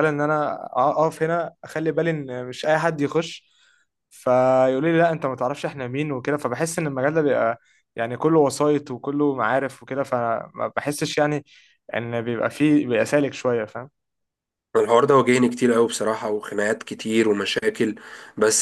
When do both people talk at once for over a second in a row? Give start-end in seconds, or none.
none